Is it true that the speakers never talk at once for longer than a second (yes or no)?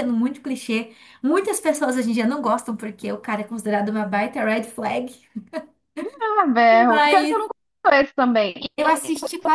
yes